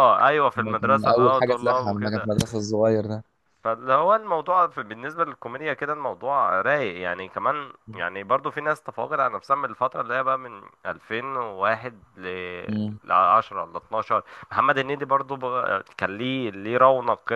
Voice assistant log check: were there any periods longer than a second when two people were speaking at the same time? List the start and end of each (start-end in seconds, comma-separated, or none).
0.6-2.3